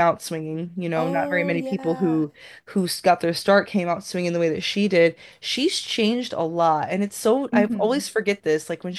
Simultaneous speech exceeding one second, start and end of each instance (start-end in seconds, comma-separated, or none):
0.9-2.2